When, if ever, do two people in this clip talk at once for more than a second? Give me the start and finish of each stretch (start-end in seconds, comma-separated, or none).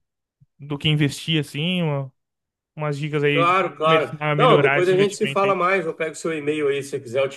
3.3-5.6